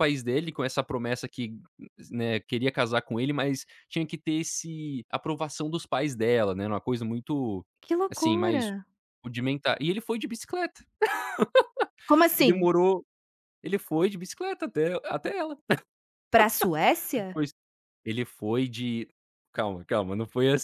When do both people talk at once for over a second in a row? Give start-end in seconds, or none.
none